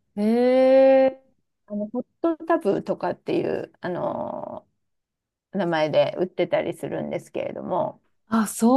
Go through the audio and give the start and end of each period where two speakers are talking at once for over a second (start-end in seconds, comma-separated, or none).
none